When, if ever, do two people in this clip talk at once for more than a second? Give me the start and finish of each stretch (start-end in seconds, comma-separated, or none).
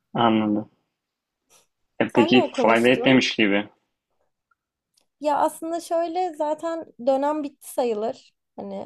2.1-3.3